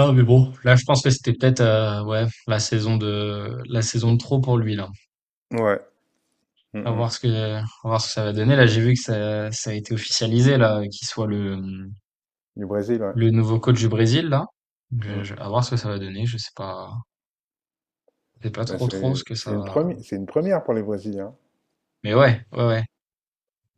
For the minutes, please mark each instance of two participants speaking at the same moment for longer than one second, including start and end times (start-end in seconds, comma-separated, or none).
18.7-19.9